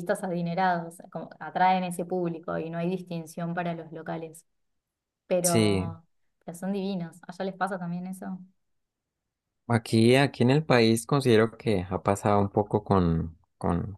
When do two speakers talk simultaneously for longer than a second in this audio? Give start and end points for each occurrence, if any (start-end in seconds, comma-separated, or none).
none